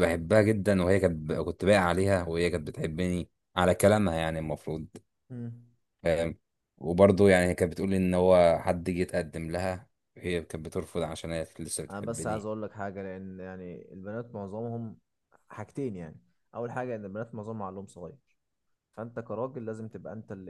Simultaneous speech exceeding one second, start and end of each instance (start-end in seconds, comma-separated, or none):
none